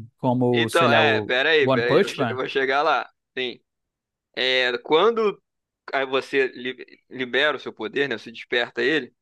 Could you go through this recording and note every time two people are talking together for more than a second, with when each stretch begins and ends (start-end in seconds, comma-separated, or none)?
0.5-2.4